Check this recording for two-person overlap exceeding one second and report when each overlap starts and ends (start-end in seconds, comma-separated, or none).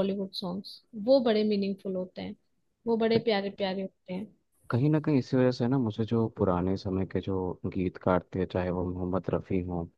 none